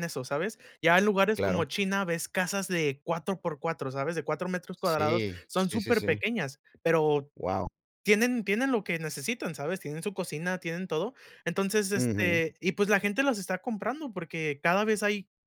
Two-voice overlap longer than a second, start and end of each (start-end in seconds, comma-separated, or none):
4.8-6.2